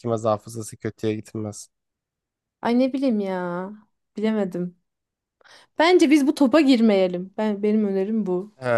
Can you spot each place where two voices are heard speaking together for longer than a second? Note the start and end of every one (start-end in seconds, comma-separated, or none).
none